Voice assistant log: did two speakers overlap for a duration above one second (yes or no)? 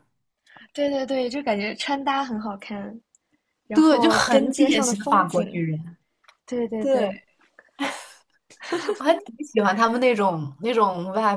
yes